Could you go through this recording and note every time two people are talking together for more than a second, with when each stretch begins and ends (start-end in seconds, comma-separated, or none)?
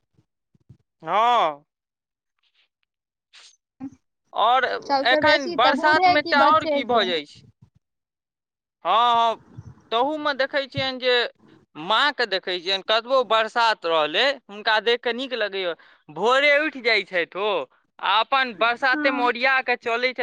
5.1-7.0